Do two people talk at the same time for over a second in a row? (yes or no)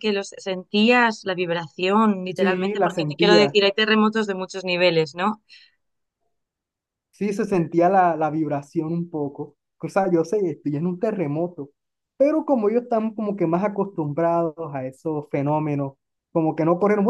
yes